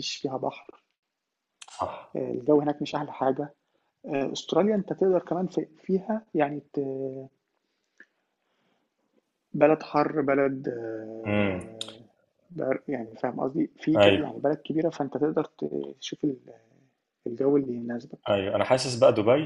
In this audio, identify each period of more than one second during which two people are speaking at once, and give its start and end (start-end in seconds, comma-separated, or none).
none